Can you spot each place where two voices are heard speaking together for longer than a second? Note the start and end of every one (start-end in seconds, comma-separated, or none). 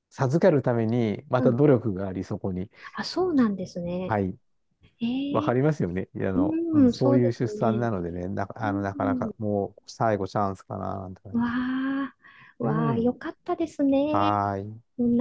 6.3-7.9